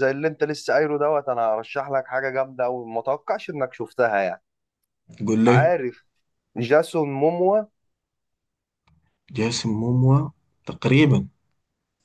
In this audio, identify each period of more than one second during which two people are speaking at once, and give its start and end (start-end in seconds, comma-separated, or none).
none